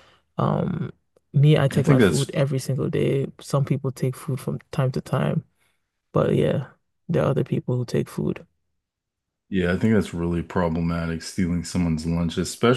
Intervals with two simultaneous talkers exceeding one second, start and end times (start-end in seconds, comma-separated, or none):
none